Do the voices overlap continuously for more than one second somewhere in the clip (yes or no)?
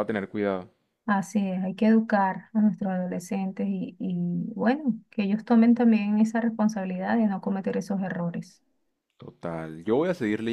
no